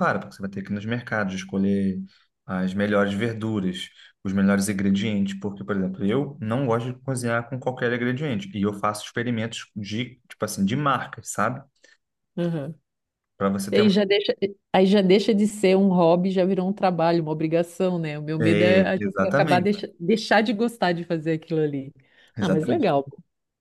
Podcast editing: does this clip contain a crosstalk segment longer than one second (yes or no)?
yes